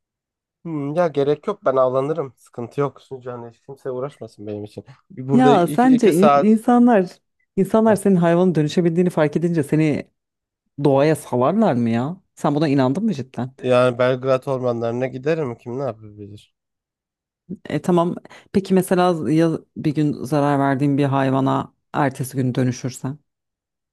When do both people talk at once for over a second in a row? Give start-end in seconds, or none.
5.3-6.6